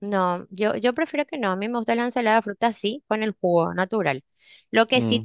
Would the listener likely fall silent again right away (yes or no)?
yes